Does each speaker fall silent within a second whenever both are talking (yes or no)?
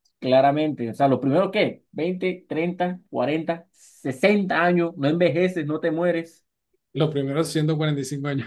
yes